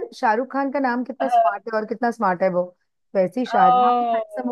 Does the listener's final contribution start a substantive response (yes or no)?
yes